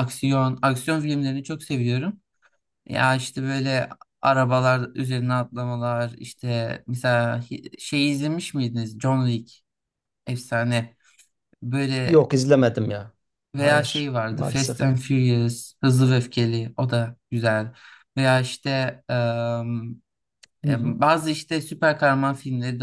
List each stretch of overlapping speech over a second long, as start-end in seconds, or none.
13.6-14.9